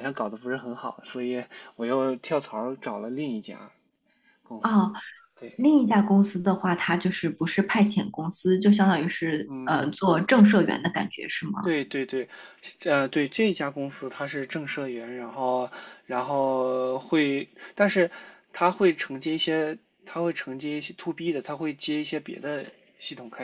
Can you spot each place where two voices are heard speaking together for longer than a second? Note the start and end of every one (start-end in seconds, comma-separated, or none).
none